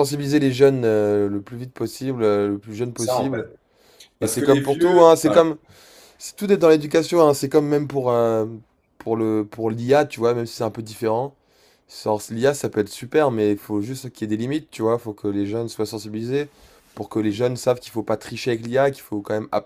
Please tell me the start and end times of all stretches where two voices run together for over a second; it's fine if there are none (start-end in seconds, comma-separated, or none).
4.2-5.4